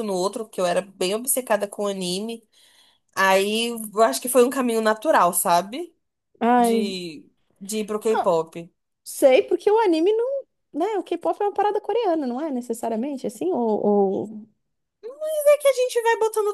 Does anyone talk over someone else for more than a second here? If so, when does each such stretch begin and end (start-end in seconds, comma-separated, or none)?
none